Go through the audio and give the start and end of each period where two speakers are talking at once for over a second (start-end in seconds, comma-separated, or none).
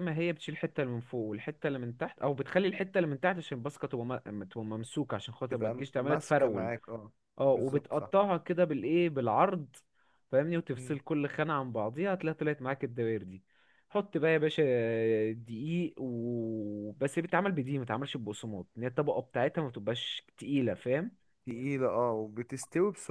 5.5-6.7